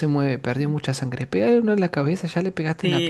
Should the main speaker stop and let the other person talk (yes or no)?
yes